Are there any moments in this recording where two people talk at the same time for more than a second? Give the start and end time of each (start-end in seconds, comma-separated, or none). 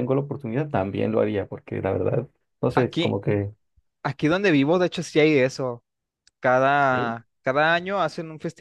none